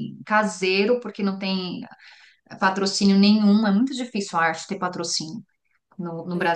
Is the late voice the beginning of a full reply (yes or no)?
no